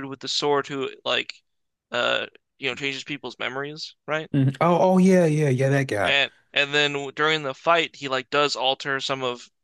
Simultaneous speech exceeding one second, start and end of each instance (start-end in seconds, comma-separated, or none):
none